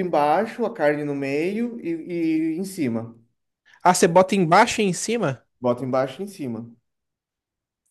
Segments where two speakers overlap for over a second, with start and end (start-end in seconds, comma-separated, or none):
none